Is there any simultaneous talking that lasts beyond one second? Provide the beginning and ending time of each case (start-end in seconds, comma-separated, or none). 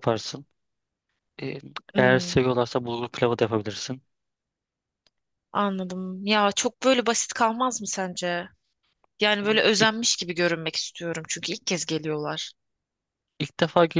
none